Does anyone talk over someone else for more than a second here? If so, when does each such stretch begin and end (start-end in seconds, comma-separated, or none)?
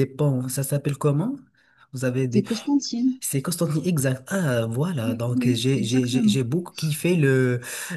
5.0-6.4